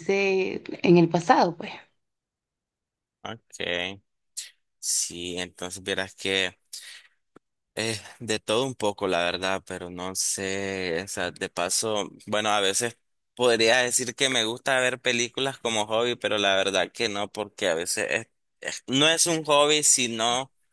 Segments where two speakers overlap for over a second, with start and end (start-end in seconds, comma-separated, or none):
none